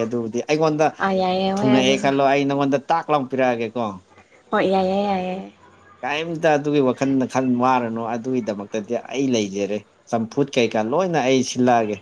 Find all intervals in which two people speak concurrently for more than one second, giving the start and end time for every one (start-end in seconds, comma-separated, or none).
none